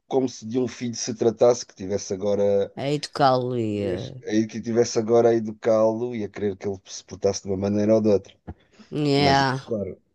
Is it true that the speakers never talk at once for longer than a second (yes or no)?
yes